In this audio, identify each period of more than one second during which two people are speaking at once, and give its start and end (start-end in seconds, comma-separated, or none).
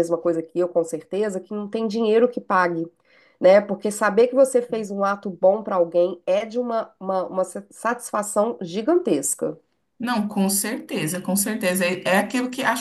none